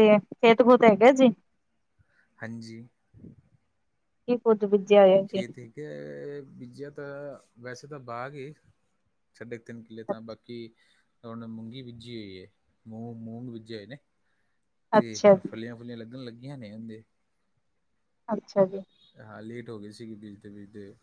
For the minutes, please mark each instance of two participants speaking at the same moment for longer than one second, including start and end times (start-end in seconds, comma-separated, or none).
none